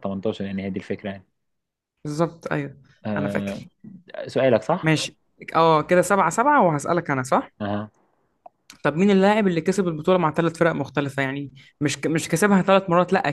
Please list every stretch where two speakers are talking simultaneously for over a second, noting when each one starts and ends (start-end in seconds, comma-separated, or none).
none